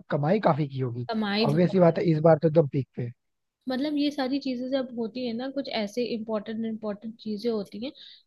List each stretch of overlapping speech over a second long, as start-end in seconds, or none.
none